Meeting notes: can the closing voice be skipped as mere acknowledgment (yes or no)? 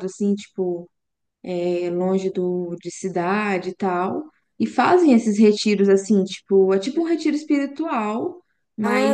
yes